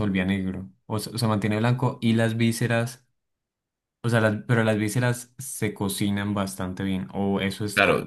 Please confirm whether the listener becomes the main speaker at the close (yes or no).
yes